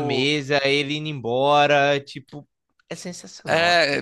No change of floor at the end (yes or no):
no